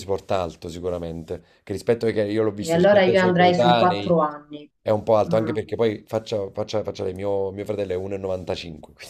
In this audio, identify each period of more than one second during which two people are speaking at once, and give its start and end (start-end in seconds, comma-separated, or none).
2.6-4.2